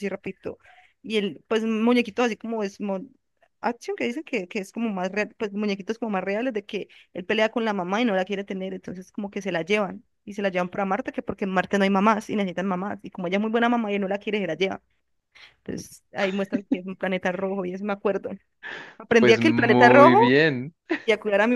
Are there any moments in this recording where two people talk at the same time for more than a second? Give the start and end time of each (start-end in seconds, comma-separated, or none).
19.2-20.4